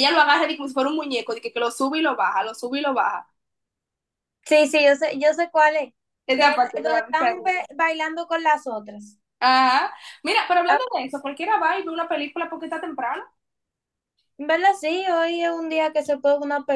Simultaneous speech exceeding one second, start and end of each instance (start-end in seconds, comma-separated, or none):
6.3-7.7